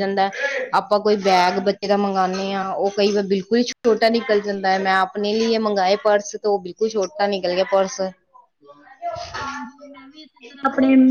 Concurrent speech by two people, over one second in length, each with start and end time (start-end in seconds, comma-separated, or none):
none